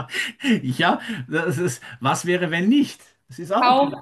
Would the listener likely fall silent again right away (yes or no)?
no